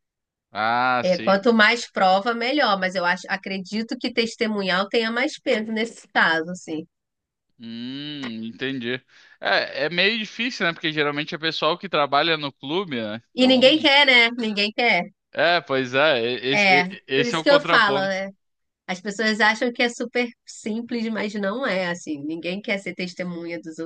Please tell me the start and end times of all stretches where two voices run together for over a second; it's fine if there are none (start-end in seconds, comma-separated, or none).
16.5-18.2